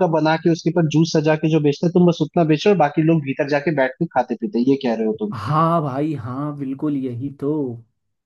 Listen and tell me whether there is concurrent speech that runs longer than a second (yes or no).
no